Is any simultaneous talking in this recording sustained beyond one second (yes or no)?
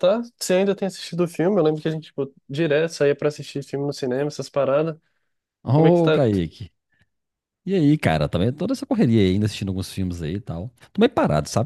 no